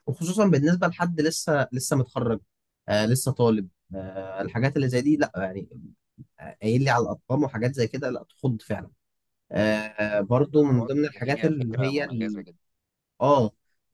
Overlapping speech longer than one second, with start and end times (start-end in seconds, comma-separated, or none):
10.6-12.4